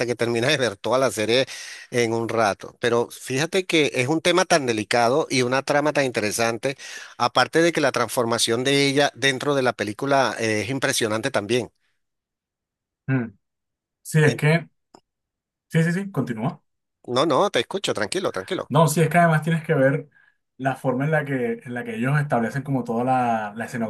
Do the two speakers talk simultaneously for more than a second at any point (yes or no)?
no